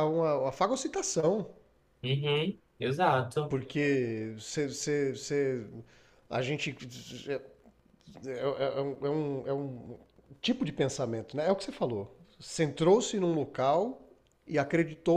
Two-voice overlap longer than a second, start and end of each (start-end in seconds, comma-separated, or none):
none